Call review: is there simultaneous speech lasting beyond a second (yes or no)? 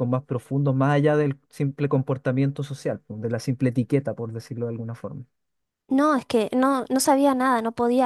no